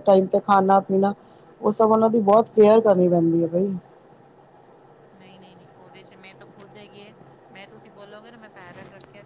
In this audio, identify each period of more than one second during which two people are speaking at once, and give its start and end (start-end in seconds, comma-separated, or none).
none